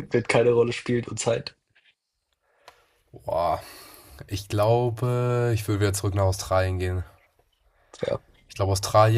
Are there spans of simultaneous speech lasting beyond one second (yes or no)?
no